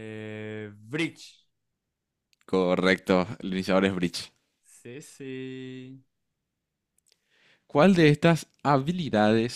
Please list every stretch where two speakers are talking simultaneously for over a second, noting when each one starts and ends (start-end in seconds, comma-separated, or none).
none